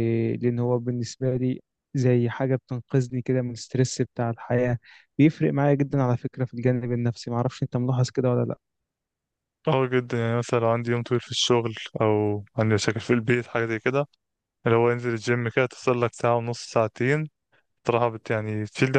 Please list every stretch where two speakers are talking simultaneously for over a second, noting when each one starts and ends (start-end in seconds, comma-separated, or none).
none